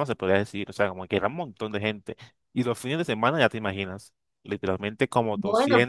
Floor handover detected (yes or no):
no